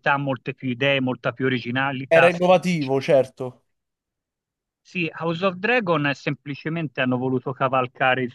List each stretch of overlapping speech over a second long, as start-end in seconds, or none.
none